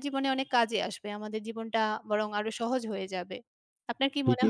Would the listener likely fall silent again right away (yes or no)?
no